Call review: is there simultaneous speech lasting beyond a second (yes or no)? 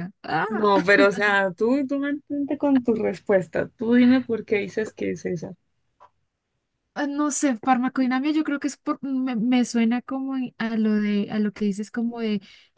no